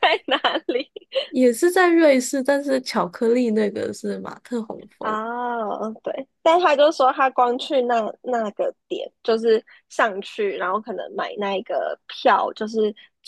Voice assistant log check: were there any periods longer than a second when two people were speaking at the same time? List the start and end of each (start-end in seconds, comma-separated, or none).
none